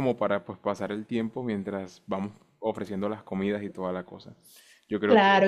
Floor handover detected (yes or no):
yes